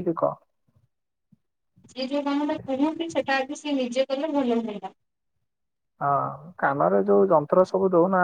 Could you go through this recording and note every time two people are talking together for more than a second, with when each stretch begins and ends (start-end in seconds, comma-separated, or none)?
none